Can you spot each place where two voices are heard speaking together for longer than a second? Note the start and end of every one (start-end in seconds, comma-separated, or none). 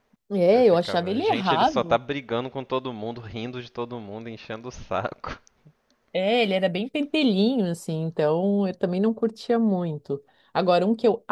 0.5-2.0